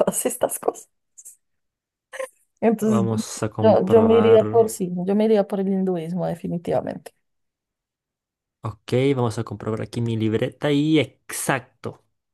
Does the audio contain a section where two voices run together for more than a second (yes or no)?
yes